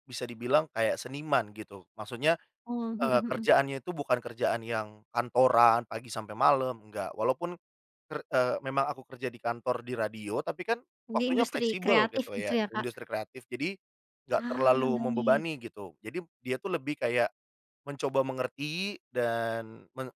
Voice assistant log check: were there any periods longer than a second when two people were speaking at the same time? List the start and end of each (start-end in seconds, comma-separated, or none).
11.1-12.8, 14.4-15.6